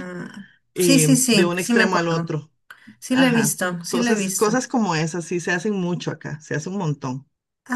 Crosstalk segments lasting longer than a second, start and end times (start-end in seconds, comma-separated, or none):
0.7-2.3, 3.1-4.6